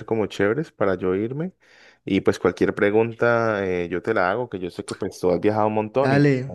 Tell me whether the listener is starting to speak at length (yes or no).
yes